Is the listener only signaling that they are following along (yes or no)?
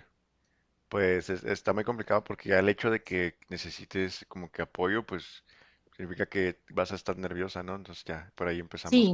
no